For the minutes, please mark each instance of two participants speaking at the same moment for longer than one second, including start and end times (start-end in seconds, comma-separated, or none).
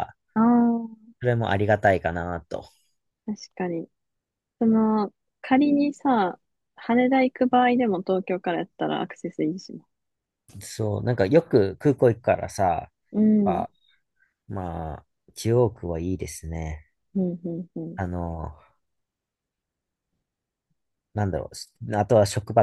none